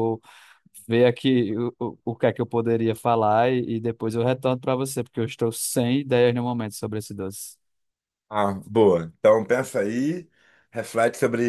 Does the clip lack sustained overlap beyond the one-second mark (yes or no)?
yes